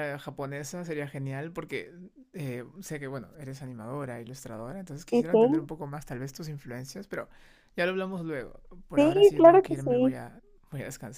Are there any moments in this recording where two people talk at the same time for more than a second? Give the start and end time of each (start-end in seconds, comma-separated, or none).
8.9-10.2